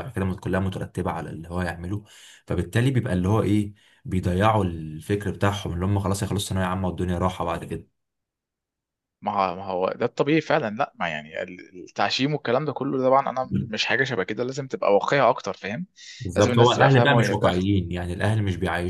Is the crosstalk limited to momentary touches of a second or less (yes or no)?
no